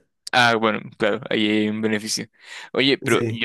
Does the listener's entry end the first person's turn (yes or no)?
no